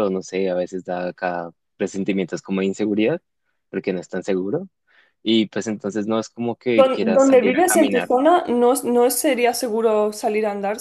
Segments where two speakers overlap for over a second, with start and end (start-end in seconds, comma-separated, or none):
6.8-8.1